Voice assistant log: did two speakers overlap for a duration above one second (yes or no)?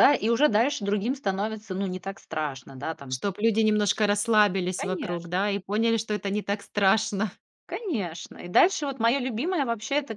no